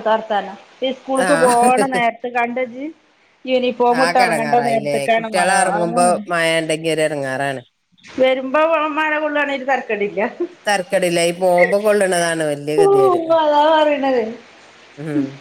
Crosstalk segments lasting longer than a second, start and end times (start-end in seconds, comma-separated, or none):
4.0-6.0